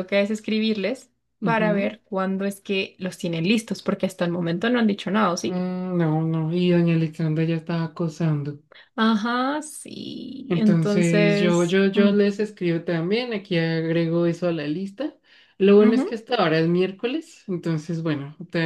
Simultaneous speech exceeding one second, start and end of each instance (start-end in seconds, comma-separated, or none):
10.5-12.1